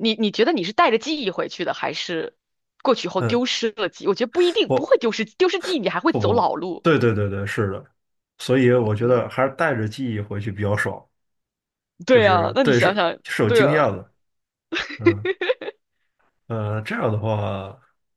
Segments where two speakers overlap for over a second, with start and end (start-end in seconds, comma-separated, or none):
12.1-13.9